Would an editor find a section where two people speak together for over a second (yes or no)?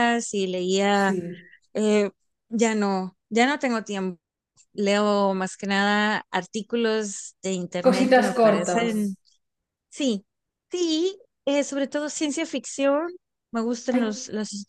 yes